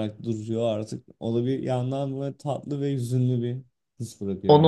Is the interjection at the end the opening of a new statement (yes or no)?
yes